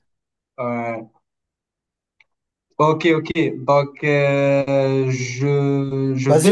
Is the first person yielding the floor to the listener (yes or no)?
yes